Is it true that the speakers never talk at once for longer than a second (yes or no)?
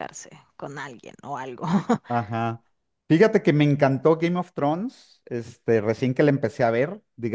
yes